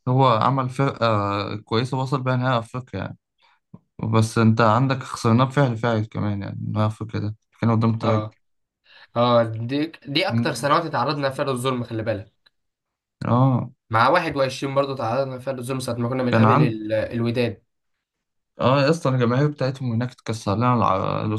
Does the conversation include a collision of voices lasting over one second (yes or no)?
no